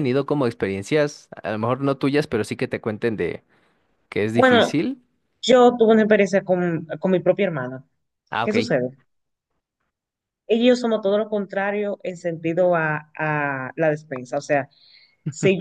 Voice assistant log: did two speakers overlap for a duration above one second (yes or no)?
no